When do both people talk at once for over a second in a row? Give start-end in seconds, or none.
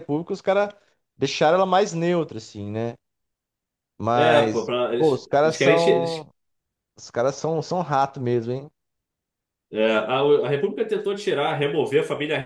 4.1-6.3